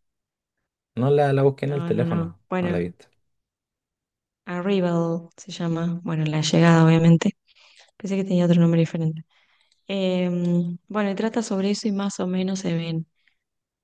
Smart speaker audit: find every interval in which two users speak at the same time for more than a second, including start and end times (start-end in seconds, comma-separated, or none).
1.6-2.9